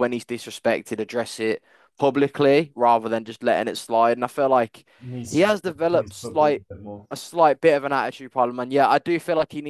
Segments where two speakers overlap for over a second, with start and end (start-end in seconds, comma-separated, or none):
5.3-6.6